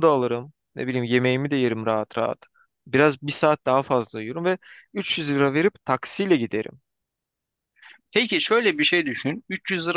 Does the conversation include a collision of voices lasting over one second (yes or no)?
no